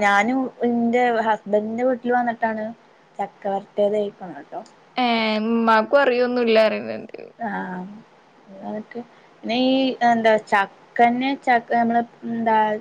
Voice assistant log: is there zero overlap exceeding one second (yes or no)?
yes